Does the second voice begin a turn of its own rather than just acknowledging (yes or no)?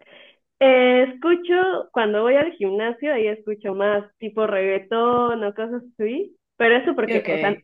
no